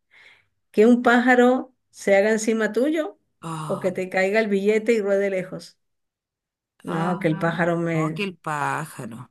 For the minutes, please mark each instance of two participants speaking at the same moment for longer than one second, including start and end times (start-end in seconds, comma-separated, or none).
6.9-8.3